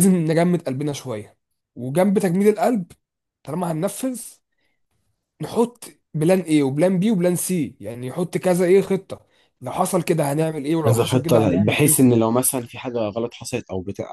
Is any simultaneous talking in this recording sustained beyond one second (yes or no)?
yes